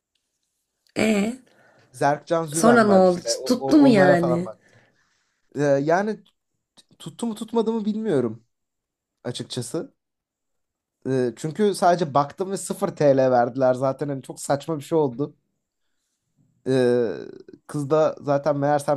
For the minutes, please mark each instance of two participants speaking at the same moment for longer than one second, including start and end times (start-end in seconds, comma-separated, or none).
2.5-4.5